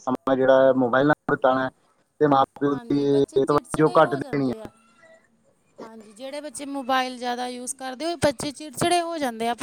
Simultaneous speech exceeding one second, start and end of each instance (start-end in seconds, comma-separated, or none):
2.7-4.6